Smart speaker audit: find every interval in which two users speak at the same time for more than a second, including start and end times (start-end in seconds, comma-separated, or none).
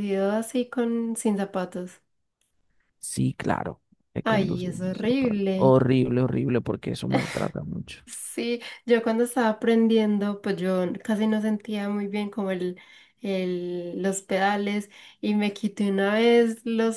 4.2-5.8